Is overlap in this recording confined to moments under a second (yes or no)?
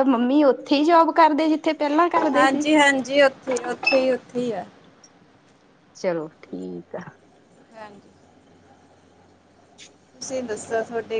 yes